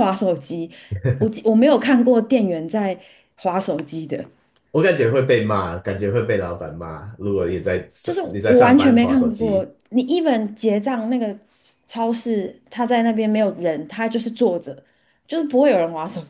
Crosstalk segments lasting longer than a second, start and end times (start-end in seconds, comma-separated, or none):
8.0-9.7